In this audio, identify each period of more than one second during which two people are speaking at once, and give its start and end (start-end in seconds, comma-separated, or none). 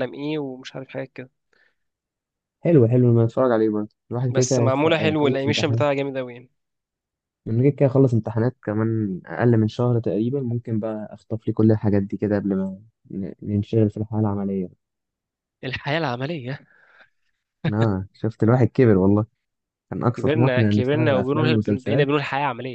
4.3-5.8, 20.1-22.1